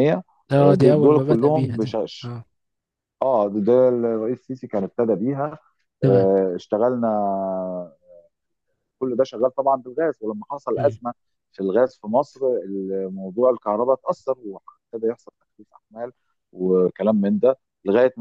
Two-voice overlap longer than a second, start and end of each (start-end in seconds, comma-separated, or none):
0.8-2.3